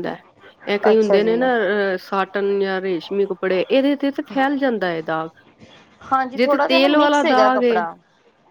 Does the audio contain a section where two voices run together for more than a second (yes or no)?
yes